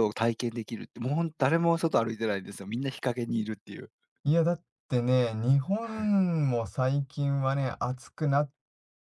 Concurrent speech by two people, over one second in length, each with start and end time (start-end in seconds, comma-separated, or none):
none